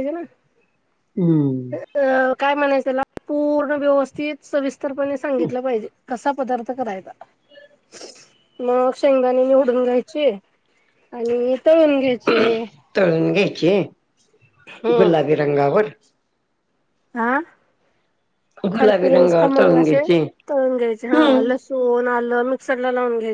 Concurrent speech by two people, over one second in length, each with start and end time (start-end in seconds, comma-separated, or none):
18.7-20.0